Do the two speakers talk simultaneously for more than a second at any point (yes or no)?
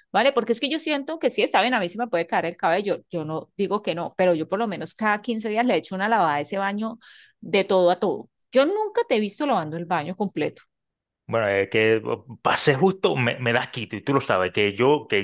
no